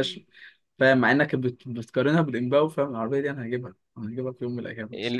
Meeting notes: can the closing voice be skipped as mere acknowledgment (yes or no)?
no